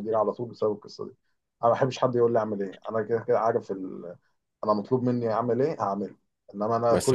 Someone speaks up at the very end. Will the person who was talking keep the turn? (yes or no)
yes